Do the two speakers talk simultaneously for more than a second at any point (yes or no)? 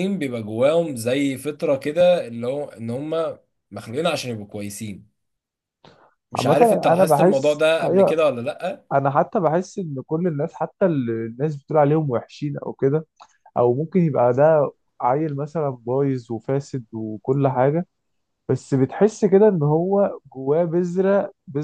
yes